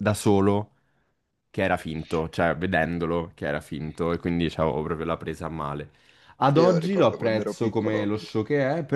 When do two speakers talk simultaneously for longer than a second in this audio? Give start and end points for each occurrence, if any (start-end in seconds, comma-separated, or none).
6.6-8.1